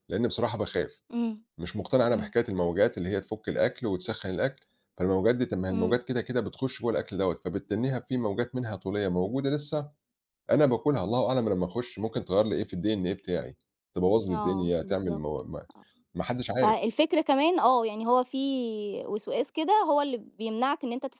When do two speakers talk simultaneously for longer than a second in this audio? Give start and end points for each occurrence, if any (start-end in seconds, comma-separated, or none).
14.3-15.7